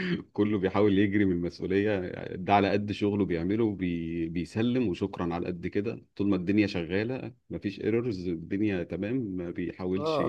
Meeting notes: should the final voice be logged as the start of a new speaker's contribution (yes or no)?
yes